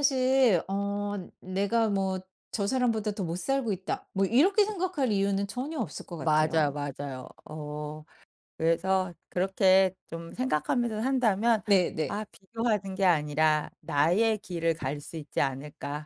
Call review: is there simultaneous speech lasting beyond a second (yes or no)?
no